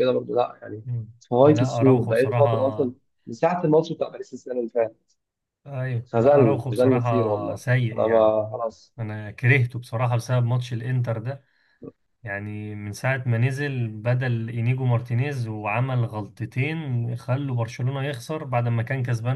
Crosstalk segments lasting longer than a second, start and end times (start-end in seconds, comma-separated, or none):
1.2-2.9, 6.1-8.3